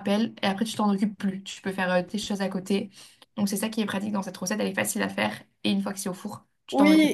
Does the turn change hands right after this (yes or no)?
yes